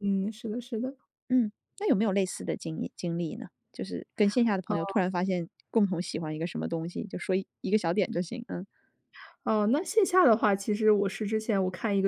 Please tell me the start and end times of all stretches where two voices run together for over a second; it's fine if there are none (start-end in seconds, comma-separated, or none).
none